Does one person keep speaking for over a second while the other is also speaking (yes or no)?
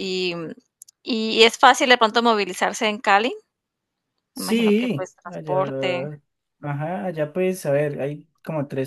yes